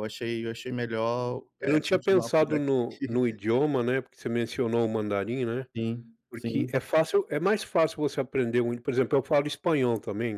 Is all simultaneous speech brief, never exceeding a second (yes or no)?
no